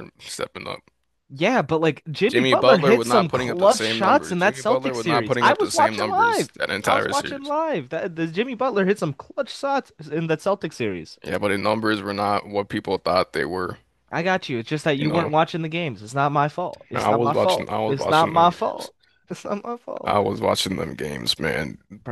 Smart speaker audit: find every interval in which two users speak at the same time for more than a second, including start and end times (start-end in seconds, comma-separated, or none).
2.3-7.5, 16.9-18.9